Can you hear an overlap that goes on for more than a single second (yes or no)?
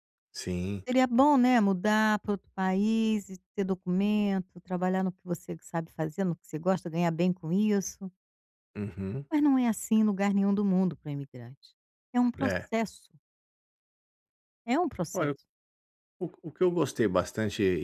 no